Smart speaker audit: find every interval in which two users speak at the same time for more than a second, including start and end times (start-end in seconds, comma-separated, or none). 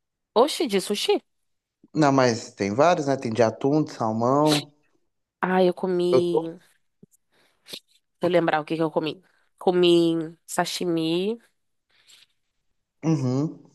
none